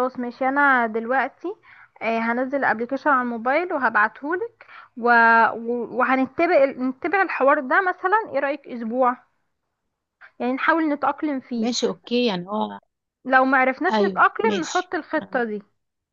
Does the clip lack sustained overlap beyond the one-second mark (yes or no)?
no